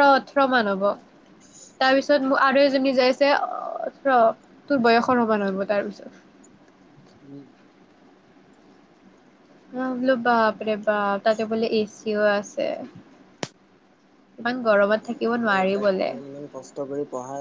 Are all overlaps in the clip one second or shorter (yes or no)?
no